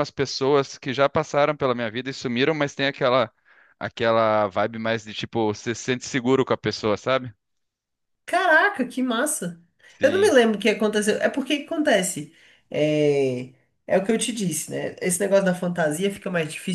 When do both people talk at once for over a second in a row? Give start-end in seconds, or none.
none